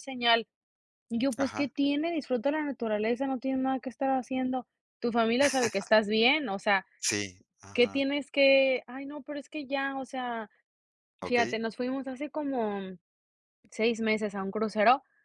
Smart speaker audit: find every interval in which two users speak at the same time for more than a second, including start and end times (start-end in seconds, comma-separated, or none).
none